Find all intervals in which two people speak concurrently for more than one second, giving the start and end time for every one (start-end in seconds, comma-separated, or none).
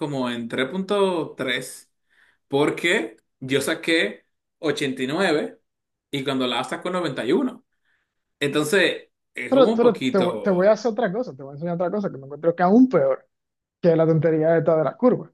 9.5-10.8